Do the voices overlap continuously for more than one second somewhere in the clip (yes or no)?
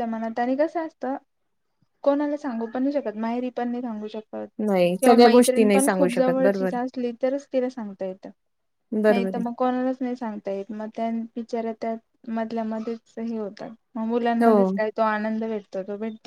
yes